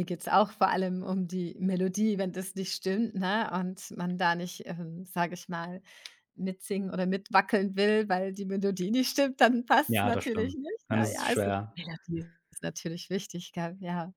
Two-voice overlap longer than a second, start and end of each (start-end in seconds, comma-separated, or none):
9.9-11.8